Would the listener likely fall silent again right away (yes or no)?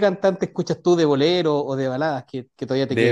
no